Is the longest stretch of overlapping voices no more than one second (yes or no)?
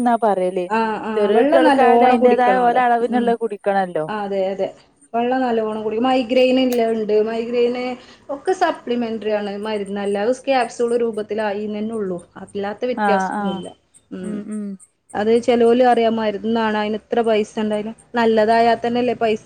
no